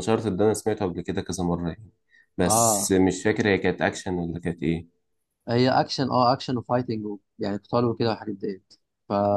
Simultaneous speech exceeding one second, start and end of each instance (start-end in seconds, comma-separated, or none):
none